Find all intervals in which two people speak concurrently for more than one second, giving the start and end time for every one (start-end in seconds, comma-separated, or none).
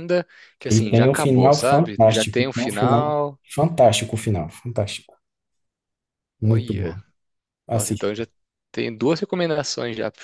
0.7-3.1